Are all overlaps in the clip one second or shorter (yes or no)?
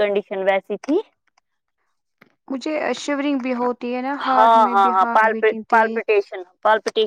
no